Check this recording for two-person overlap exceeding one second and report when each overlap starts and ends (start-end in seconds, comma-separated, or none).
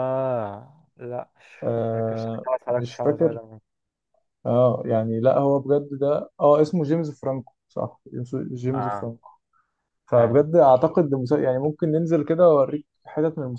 1.9-3.4